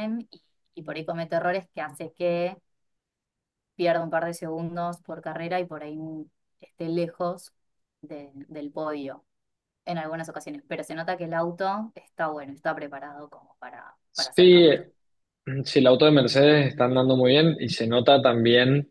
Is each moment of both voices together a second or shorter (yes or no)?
yes